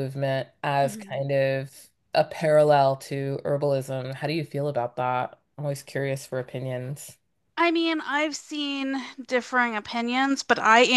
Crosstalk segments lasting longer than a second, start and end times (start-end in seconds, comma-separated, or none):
none